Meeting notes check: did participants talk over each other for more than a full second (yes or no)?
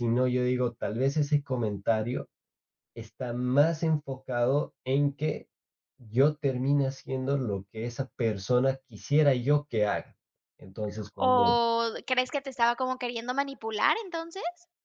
no